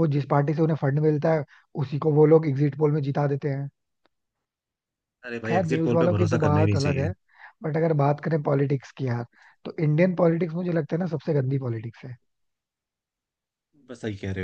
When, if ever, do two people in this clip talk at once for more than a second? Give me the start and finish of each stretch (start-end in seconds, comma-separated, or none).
5.5-7.1